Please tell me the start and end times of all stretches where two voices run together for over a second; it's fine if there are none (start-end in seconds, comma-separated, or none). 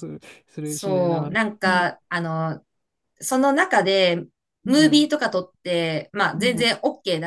0.6-2.0